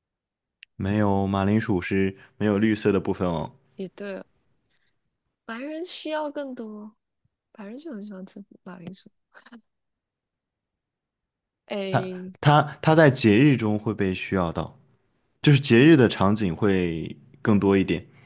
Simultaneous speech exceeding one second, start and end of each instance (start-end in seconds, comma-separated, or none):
none